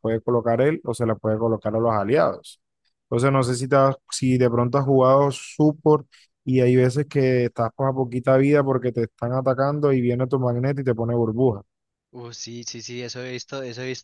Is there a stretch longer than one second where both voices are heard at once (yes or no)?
no